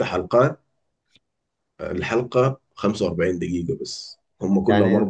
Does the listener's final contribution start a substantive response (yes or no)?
yes